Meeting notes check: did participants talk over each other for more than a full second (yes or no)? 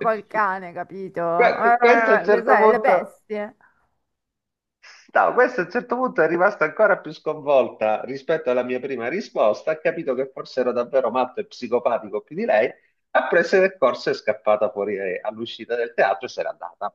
yes